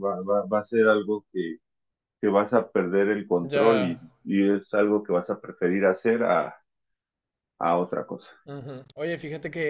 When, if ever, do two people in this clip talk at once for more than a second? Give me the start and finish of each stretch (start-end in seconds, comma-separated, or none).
none